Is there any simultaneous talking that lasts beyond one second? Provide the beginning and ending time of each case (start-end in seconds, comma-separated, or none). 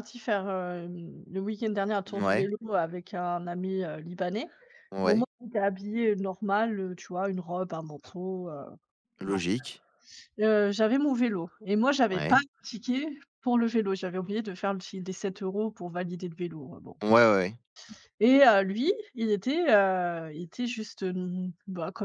none